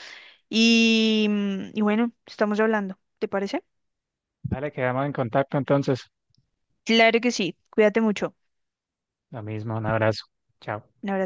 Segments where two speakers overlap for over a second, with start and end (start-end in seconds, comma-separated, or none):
none